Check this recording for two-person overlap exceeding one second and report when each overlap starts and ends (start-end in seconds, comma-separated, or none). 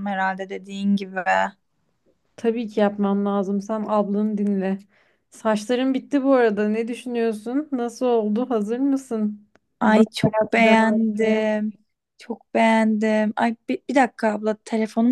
9.9-11.4